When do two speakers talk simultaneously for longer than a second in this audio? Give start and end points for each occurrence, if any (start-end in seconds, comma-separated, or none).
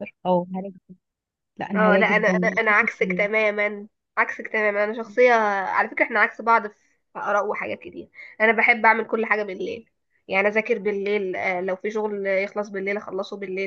1.8-3.3